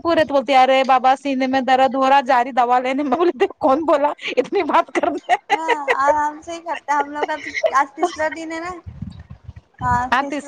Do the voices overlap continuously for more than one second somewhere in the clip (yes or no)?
no